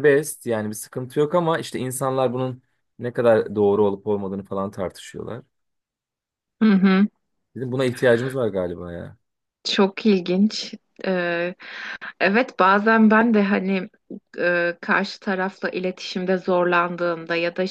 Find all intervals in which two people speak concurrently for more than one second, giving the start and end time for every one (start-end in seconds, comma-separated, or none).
none